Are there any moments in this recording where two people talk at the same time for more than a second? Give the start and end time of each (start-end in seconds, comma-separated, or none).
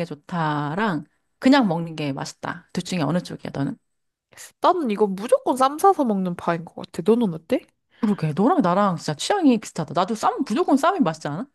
none